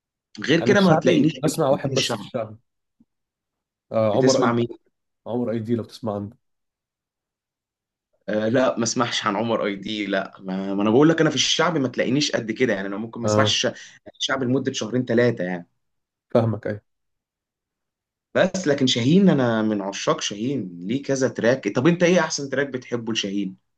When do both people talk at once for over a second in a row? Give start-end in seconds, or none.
0.6-2.3